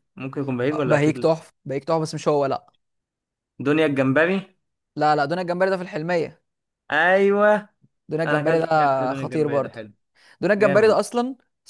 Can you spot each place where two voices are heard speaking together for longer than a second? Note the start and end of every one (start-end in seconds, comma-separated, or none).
8.3-9.8